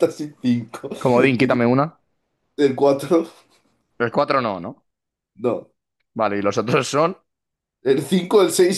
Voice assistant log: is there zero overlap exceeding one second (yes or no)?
yes